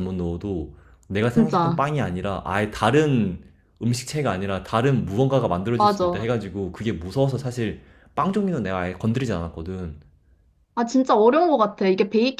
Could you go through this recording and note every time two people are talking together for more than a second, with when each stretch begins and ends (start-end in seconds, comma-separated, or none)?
none